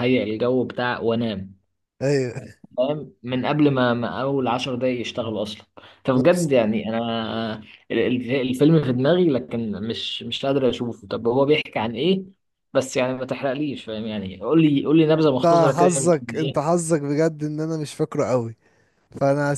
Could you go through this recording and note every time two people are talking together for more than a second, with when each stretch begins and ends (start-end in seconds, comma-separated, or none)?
15.2-16.7